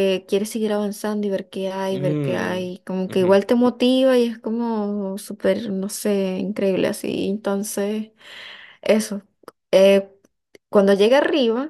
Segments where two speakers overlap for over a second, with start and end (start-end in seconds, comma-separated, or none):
1.9-3.4